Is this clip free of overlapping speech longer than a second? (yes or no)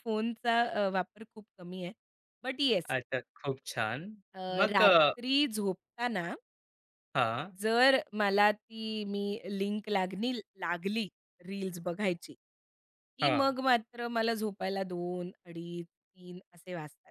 yes